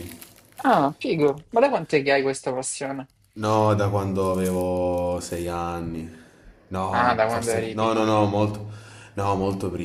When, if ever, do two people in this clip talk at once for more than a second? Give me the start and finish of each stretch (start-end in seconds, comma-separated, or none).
6.9-8.3